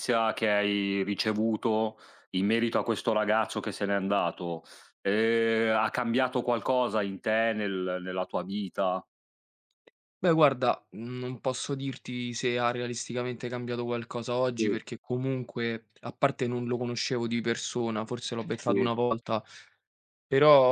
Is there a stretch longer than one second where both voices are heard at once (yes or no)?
no